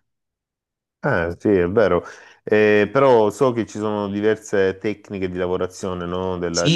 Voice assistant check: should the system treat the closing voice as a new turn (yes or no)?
yes